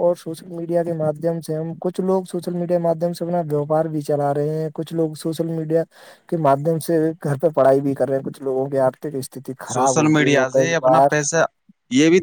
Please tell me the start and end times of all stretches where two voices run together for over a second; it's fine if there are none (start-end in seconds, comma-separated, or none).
9.7-11.2